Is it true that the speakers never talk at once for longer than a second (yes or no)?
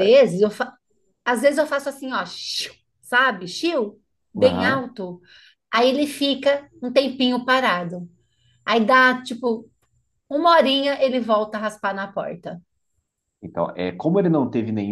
yes